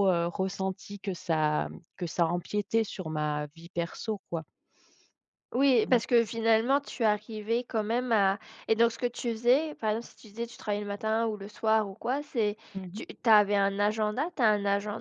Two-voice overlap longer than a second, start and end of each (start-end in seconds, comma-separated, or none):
none